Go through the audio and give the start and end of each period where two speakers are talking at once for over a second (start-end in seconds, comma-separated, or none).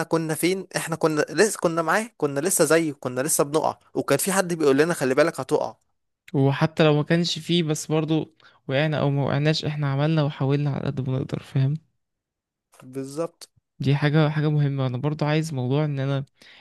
none